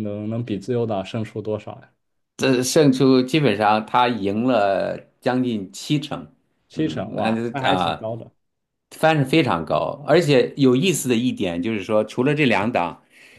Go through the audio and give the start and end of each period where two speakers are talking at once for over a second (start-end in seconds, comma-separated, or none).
6.7-8.1